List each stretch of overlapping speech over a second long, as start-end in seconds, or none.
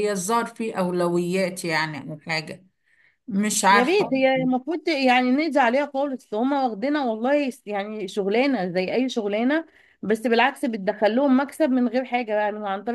none